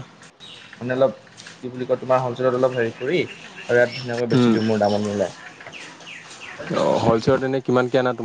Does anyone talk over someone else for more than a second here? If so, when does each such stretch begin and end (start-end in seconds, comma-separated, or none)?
none